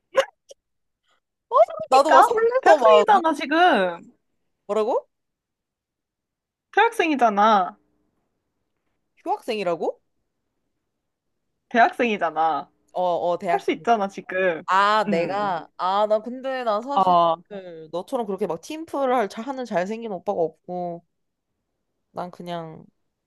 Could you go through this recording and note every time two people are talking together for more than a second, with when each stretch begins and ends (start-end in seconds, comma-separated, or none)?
1.9-3.2